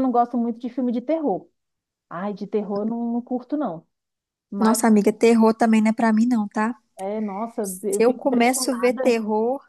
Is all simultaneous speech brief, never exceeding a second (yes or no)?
no